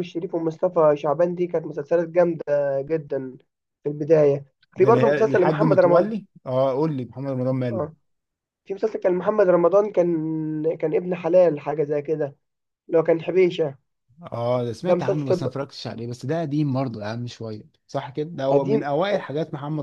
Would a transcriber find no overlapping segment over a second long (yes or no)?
no